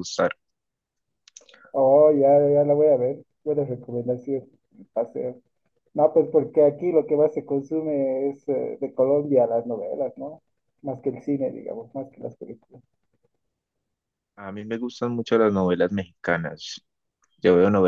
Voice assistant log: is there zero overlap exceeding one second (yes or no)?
yes